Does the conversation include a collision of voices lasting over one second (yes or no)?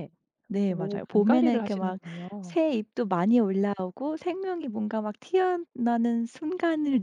yes